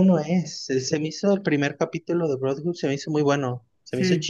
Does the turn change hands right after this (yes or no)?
no